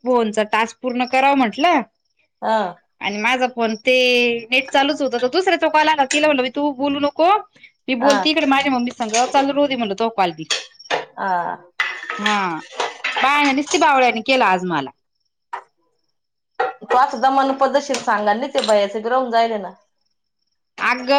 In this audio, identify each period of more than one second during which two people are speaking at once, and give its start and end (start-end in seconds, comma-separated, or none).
none